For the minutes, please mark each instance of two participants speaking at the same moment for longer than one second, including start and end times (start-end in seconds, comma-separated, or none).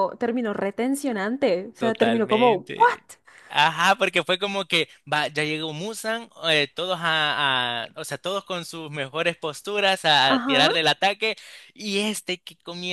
1.8-3.0